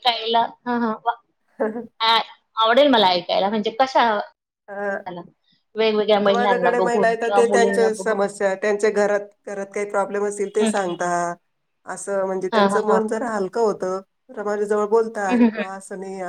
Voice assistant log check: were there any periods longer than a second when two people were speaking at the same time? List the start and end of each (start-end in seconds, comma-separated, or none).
6.2-8.2